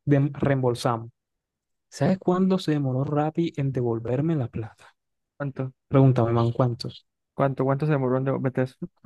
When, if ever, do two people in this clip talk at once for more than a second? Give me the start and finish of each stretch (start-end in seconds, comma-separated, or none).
none